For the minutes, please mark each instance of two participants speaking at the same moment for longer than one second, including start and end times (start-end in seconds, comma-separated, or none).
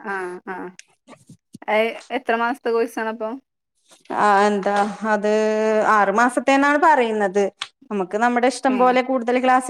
none